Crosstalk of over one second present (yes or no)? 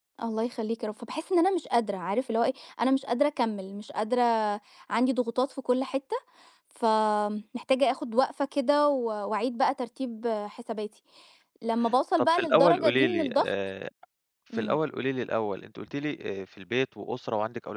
yes